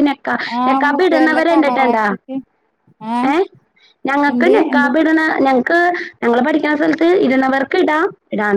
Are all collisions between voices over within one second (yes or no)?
no